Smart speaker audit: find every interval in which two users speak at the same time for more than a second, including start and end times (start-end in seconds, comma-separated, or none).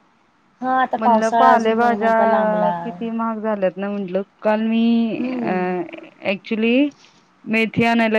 1.0-2.7